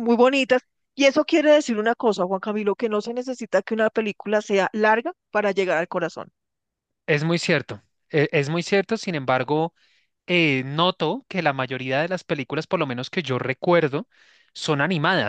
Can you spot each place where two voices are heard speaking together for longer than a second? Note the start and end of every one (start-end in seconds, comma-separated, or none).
none